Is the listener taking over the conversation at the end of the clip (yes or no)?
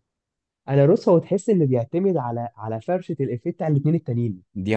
no